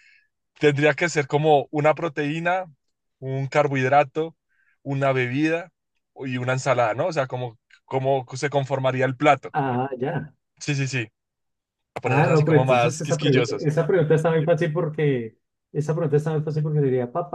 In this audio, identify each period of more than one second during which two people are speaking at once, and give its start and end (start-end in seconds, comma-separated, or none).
12.0-13.7